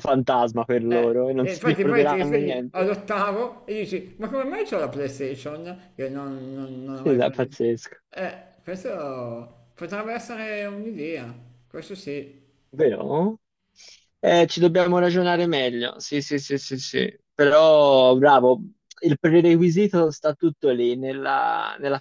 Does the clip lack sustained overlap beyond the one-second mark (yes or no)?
no